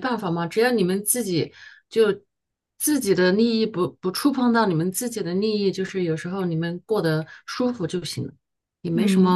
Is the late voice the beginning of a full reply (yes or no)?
yes